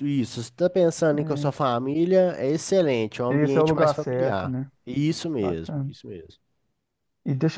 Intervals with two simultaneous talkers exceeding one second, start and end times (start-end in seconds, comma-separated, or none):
3.3-4.7